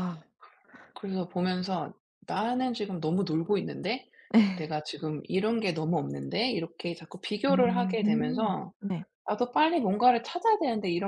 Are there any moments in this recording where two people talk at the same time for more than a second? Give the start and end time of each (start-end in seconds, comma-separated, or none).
7.5-8.7